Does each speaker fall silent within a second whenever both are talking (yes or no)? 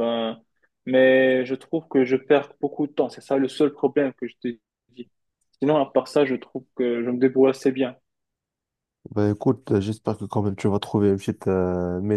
yes